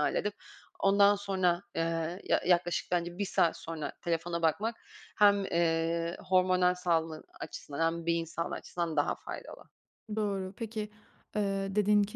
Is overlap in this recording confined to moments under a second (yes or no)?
yes